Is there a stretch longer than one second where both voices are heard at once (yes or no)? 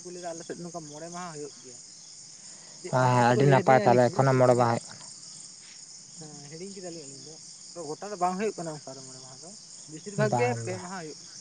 yes